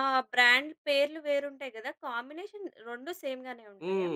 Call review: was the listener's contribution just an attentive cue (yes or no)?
no